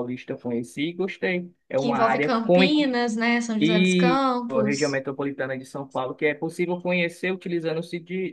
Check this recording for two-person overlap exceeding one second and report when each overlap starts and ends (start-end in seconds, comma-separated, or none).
3.6-5.0